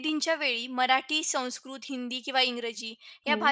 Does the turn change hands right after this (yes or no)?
no